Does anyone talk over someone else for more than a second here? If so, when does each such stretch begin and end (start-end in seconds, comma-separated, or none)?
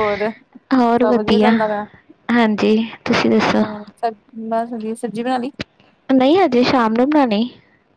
none